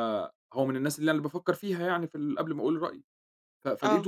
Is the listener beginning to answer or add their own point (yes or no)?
no